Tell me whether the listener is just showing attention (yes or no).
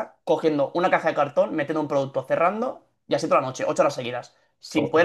yes